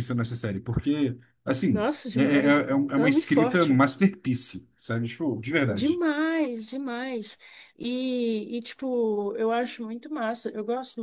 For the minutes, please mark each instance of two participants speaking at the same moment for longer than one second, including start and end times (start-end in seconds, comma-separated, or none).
1.7-3.8